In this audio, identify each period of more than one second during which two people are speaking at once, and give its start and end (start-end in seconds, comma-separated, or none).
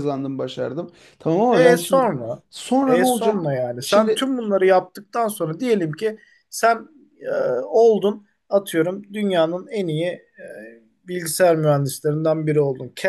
2.9-4.3